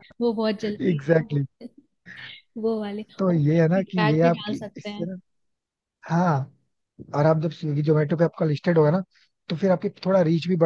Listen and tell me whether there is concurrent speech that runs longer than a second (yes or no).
yes